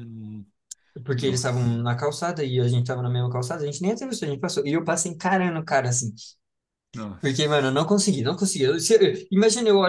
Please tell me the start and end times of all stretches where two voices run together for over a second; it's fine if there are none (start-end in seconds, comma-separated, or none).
none